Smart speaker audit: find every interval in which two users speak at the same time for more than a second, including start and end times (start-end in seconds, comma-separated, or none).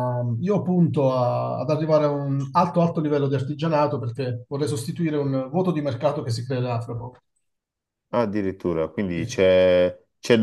none